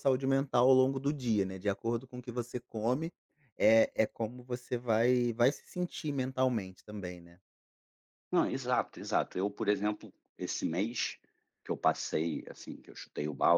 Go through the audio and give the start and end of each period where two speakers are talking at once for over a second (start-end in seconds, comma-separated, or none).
none